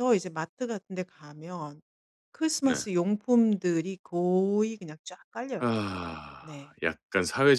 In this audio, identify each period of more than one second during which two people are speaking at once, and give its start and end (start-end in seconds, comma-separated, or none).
none